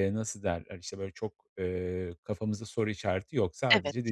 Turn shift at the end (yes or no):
no